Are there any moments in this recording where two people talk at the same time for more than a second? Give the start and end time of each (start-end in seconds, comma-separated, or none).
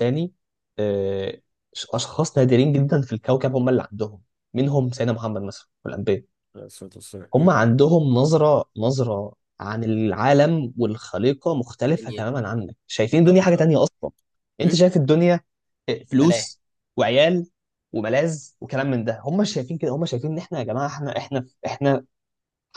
none